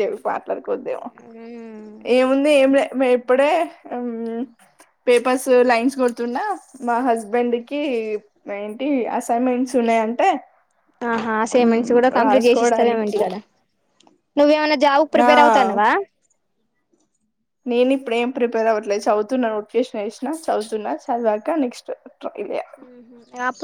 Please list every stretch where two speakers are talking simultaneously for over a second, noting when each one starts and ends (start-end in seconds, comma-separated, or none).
11.6-13.2